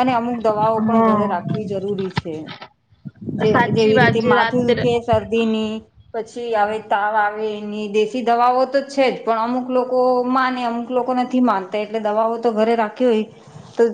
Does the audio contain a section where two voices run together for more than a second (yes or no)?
yes